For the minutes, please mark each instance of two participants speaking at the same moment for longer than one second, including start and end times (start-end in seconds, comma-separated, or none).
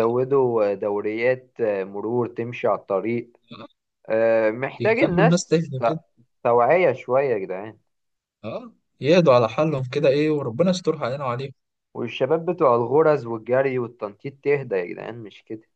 4.8-6.0